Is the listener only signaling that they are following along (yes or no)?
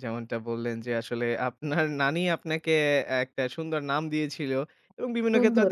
yes